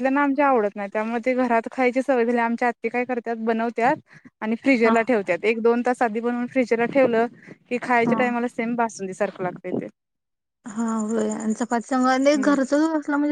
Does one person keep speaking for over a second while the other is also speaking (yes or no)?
no